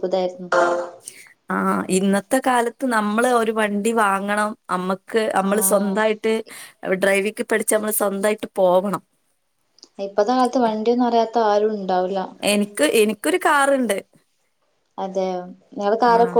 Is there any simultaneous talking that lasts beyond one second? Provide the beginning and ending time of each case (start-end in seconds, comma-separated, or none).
none